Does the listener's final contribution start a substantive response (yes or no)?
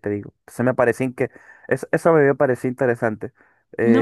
yes